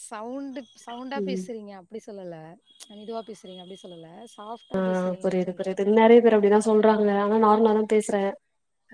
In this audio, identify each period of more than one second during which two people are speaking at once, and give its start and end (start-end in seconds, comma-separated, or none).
none